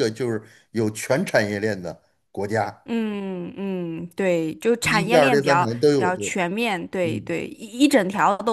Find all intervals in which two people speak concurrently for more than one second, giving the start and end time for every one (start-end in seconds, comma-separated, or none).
4.8-6.3